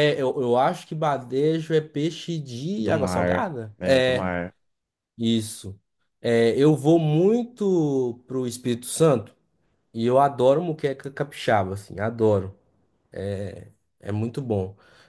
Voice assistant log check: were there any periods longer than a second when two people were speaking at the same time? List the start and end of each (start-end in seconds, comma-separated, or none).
2.8-4.3